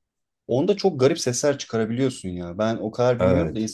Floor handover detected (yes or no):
no